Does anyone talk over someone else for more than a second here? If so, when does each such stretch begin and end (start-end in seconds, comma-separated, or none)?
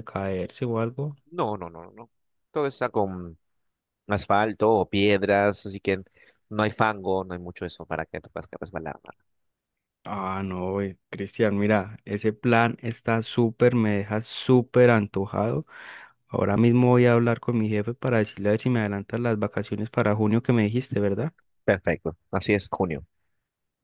none